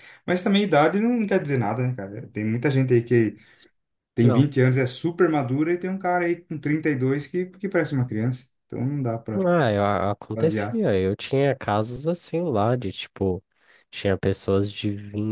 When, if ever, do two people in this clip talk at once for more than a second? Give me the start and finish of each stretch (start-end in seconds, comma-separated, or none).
none